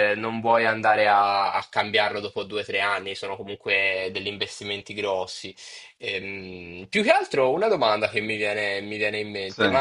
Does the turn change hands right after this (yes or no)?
no